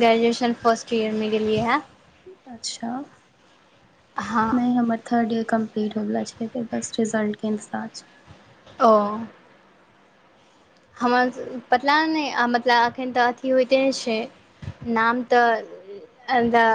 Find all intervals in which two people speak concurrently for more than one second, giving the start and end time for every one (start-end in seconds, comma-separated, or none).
none